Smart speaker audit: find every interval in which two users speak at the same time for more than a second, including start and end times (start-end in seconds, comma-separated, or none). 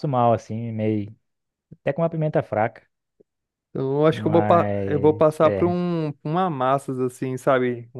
4.1-5.8